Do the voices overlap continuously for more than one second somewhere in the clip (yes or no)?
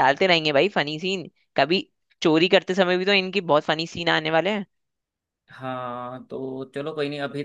no